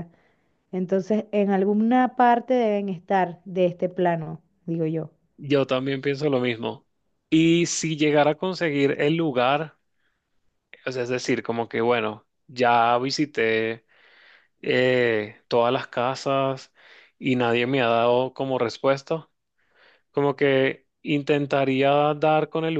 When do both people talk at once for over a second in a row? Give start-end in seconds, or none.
none